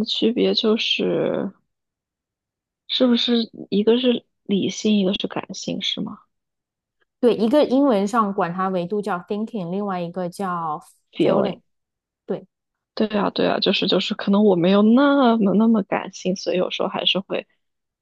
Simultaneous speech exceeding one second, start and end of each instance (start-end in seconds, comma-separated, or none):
none